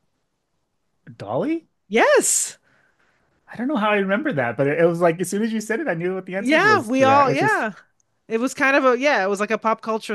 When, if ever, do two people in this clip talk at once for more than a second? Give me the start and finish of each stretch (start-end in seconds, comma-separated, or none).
6.4-7.7